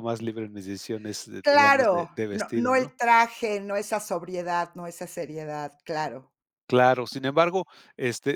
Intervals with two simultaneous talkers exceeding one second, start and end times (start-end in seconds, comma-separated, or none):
1.4-3.0